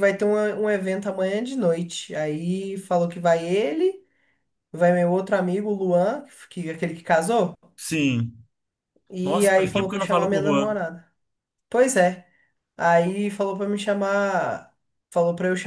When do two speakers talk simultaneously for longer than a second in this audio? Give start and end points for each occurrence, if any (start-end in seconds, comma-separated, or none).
9.2-10.8